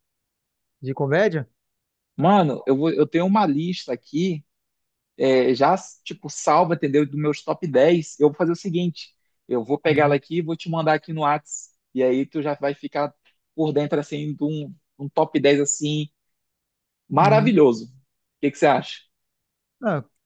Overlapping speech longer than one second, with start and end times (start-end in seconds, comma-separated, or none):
none